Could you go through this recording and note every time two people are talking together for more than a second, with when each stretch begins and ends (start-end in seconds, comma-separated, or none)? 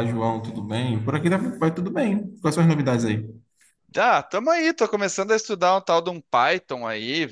none